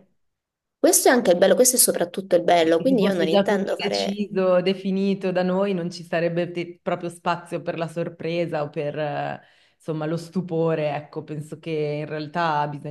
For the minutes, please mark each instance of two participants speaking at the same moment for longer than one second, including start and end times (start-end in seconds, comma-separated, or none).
2.5-4.2